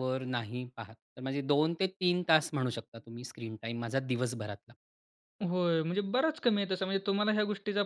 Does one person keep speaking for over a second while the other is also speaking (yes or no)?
no